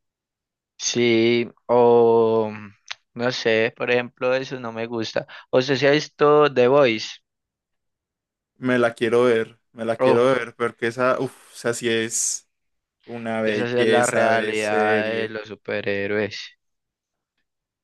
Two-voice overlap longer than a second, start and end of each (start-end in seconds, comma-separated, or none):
13.4-15.4